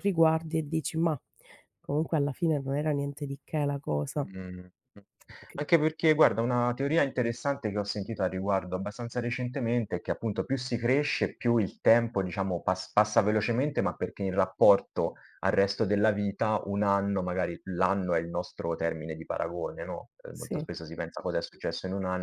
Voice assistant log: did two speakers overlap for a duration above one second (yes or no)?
no